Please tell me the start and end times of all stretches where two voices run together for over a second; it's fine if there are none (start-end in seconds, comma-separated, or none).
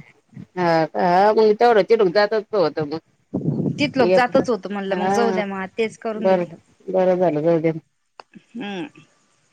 4.1-5.4